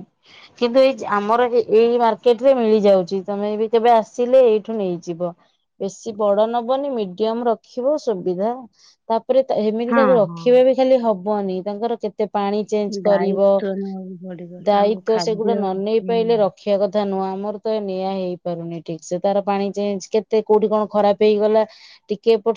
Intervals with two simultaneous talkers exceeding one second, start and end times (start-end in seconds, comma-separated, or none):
14.7-16.3